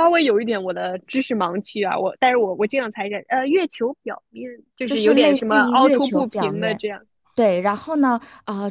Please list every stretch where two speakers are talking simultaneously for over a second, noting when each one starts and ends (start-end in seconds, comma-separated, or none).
4.8-6.8